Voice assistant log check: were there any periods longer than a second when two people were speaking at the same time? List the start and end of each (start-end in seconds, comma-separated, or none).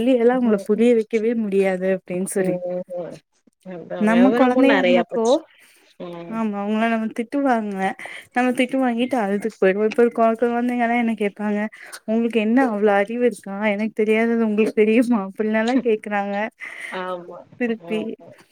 none